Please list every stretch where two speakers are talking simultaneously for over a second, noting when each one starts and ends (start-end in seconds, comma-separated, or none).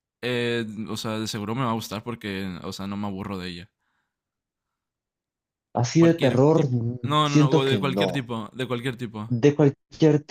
6.0-8.3